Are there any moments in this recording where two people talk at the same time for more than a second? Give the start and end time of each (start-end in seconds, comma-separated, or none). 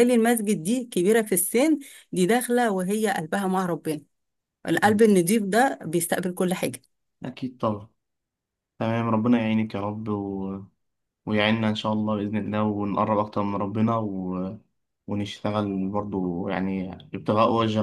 none